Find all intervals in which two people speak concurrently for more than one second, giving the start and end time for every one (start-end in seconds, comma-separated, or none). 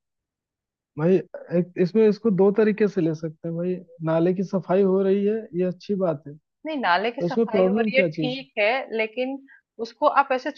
7.0-8.5